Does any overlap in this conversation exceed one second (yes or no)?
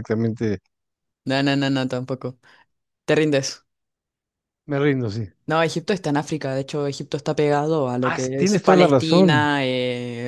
yes